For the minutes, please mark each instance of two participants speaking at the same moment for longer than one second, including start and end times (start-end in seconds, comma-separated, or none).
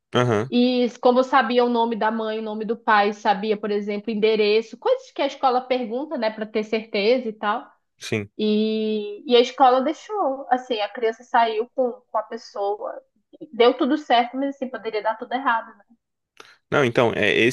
none